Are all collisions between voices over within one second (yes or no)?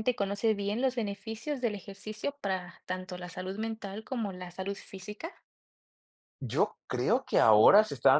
yes